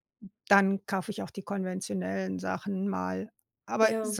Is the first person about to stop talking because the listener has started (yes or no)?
no